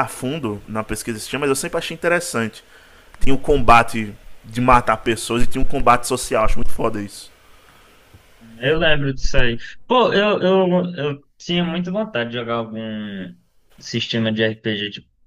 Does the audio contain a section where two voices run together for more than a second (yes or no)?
no